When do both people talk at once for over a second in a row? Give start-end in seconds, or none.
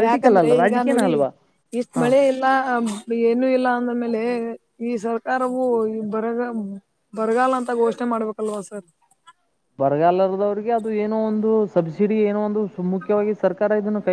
none